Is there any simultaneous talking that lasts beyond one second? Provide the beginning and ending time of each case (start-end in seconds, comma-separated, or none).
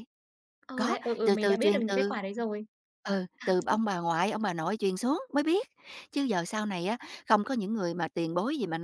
0.7-2.2